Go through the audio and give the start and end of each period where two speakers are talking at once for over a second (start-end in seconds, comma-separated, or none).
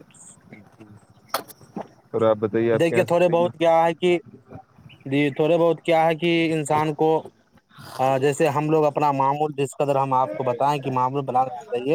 2.8-4.2